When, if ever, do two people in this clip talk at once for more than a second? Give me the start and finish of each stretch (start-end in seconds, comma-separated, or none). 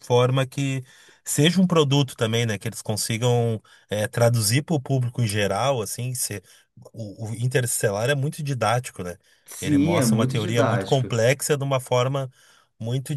9.6-11.2